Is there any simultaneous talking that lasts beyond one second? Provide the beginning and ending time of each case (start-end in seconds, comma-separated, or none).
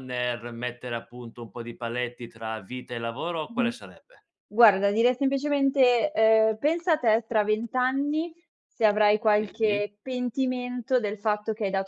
none